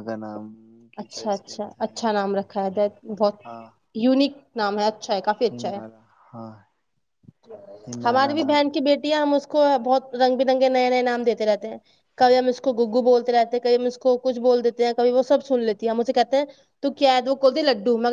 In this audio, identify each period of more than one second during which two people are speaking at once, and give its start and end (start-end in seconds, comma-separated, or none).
1.0-2.4